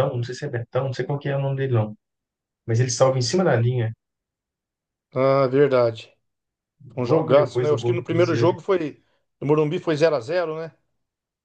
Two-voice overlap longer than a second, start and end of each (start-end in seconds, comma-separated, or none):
7.0-8.6